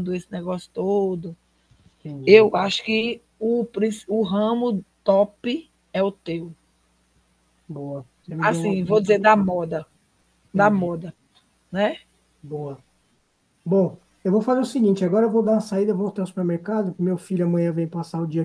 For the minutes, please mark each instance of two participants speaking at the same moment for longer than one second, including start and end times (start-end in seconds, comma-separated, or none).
8.4-9.6